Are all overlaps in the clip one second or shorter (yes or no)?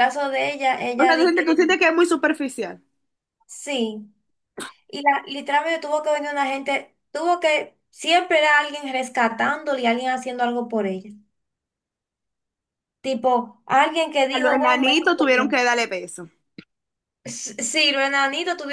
no